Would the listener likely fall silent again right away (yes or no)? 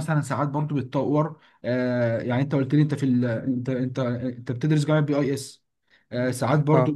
yes